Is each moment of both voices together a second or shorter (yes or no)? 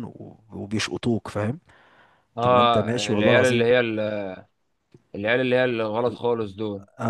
no